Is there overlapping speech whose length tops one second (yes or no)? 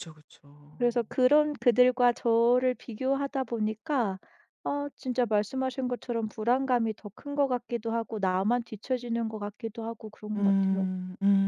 no